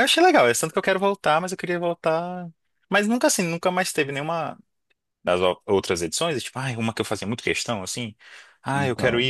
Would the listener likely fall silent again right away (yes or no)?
yes